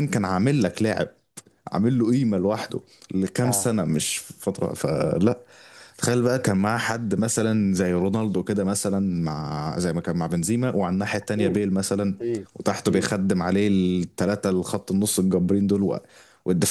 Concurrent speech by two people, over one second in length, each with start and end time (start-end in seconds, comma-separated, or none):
none